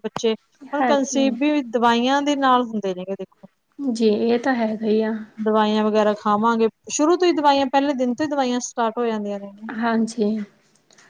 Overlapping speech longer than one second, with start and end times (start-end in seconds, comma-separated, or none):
none